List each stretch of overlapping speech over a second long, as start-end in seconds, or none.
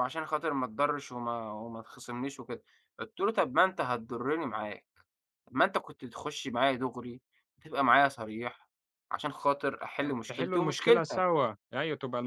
10.0-11.4